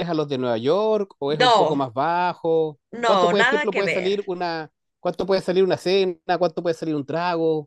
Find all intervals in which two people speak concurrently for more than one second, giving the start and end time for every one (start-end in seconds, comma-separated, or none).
2.9-4.2